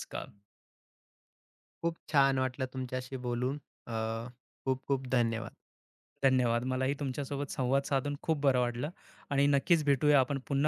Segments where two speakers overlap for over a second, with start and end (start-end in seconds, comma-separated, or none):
none